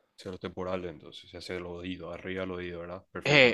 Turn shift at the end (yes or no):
yes